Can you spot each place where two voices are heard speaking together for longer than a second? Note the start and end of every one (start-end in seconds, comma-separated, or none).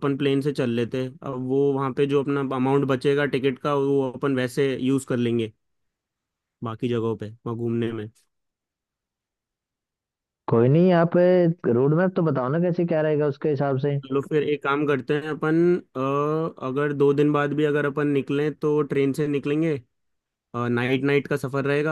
none